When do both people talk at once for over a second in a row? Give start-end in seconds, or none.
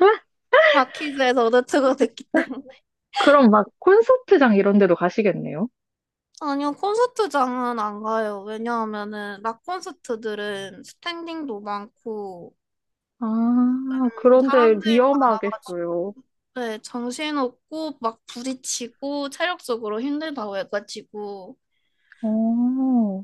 13.9-15.8